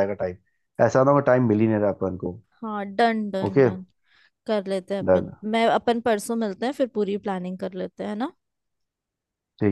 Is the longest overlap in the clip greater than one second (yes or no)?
no